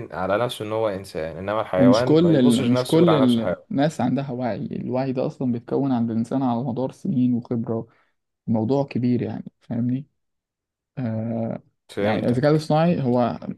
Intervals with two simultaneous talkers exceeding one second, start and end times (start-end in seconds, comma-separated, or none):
1.8-3.1